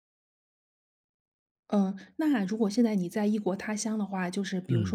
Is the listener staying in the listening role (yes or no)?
yes